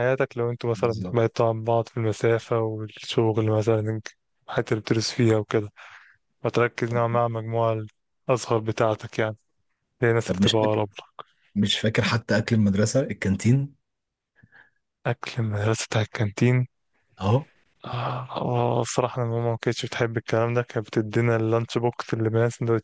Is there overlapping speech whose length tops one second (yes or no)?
no